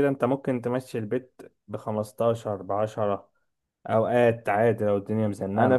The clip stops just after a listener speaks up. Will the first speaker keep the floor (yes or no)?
no